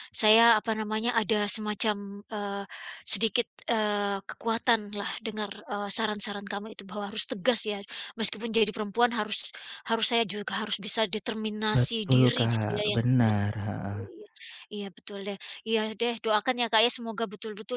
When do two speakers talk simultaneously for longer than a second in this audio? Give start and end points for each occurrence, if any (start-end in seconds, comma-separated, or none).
11.7-14.0